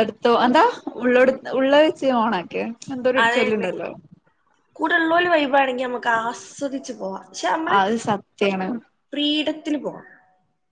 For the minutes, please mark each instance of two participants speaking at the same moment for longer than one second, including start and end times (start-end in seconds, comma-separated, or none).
none